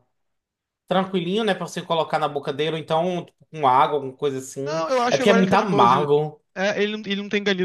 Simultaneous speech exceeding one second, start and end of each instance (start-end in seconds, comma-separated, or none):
4.7-6.1